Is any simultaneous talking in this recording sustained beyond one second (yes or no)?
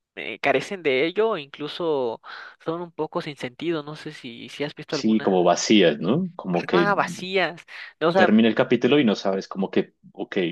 no